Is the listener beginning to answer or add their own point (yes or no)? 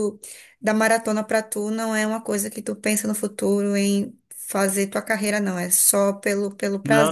yes